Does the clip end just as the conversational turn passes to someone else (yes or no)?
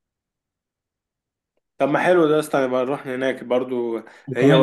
no